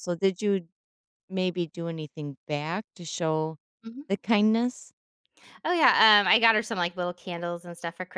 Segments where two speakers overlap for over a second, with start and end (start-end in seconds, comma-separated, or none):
none